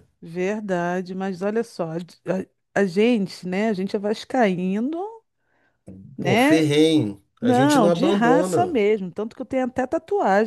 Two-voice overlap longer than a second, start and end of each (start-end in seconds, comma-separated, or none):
7.4-8.8